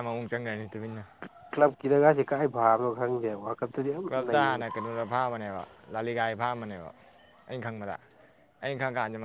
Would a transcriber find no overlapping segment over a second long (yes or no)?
yes